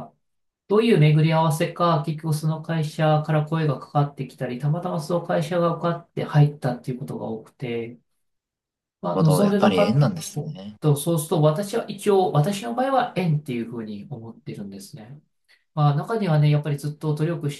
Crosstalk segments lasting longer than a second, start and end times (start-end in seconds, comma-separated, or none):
9.1-10.8